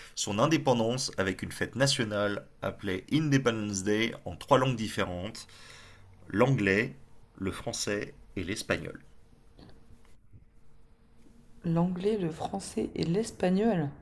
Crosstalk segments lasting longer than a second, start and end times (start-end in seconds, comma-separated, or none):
none